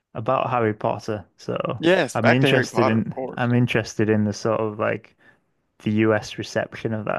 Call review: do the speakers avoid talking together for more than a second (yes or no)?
no